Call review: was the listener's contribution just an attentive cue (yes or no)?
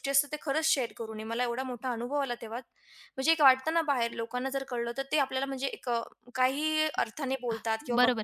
no